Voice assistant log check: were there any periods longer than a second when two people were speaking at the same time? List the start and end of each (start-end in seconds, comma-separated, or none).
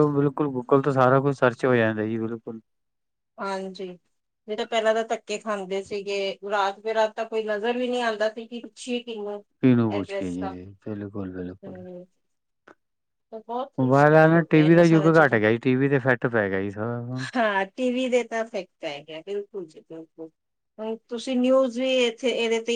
13.8-15.4